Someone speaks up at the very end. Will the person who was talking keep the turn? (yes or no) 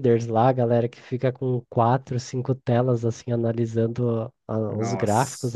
yes